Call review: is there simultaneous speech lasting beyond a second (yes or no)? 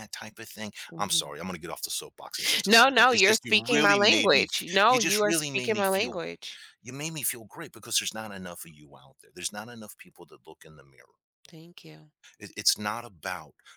yes